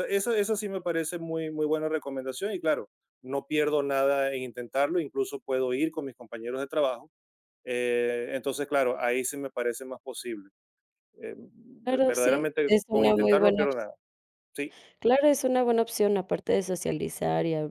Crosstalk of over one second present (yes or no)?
yes